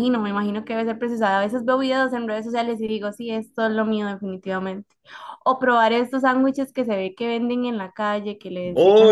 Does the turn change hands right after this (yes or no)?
yes